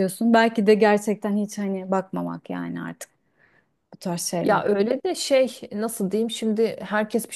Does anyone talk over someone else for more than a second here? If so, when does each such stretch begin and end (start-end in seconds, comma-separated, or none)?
none